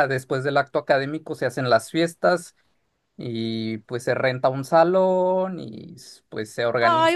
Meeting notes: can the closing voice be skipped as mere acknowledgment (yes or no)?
no